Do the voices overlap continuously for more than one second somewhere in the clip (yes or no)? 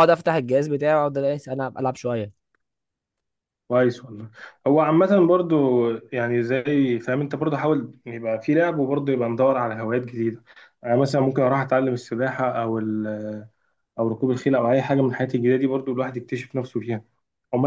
no